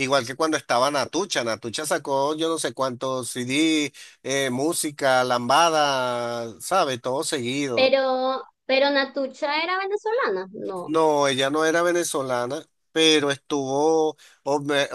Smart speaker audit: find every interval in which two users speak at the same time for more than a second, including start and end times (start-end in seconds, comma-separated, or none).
none